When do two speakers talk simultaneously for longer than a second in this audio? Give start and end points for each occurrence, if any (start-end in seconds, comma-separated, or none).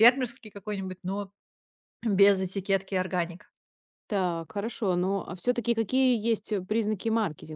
none